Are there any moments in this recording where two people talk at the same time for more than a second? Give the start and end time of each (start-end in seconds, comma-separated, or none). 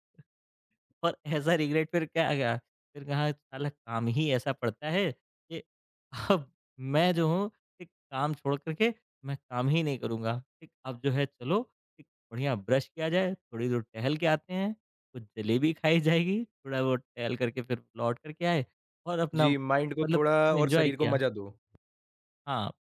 19.4-21.2